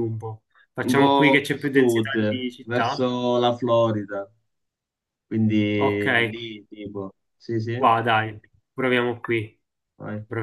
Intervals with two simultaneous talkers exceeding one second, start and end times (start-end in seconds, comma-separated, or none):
0.8-3.1